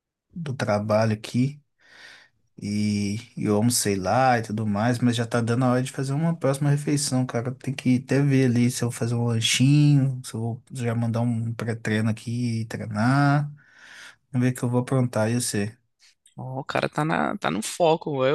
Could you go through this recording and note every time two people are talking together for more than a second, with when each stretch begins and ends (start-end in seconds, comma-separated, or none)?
none